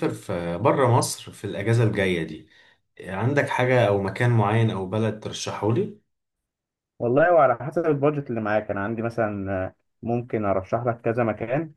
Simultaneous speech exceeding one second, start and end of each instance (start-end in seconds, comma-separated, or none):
none